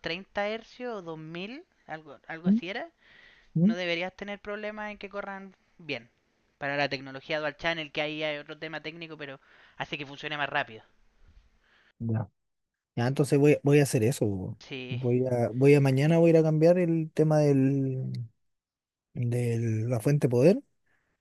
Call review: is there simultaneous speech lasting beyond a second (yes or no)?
no